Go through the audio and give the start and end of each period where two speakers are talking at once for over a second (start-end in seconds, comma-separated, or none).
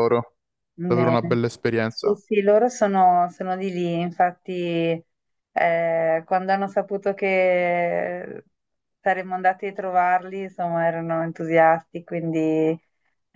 none